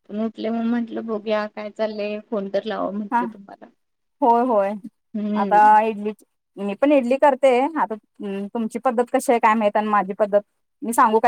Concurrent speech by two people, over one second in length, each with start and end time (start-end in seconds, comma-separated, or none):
none